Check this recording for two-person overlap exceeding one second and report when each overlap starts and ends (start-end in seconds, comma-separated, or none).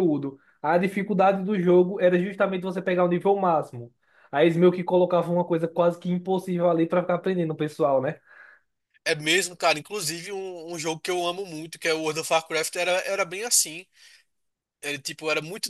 none